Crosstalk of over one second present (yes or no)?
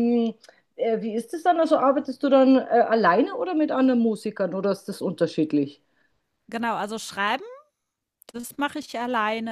no